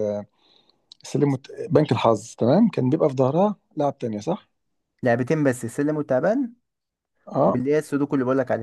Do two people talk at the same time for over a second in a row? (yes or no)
no